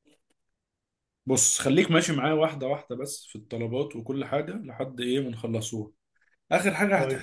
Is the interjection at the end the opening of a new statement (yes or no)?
no